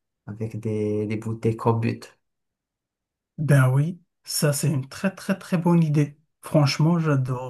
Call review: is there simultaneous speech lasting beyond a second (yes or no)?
no